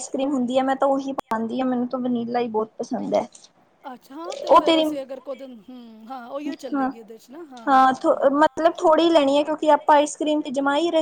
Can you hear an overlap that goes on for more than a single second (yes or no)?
no